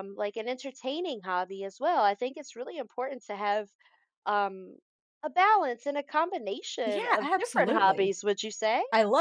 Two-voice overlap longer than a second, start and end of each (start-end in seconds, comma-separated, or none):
6.8-8.1